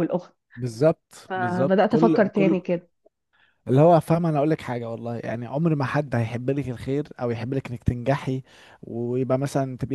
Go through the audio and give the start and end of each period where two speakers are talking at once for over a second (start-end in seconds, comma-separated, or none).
1.3-2.6